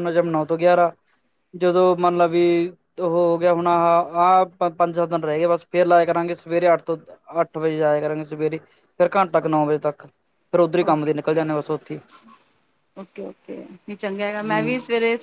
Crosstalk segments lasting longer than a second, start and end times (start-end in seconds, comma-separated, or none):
none